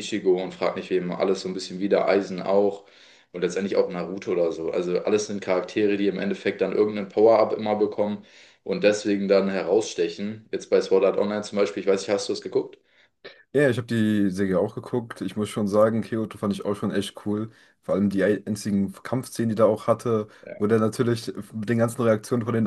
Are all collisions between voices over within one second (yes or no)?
yes